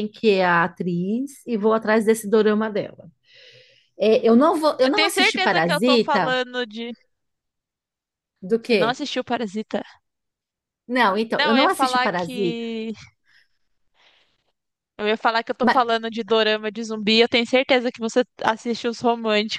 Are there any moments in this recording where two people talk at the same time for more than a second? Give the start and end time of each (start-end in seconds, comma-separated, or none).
4.8-6.4, 11.3-12.6